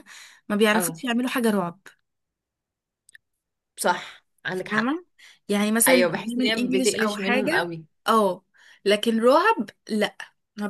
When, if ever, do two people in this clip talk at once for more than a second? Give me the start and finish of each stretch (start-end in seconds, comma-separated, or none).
5.9-7.7